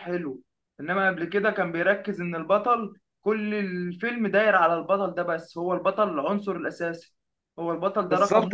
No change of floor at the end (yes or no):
no